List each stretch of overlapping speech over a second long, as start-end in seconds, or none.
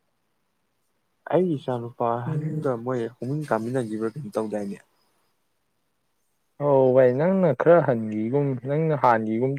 none